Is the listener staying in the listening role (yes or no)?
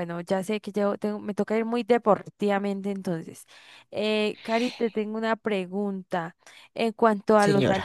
yes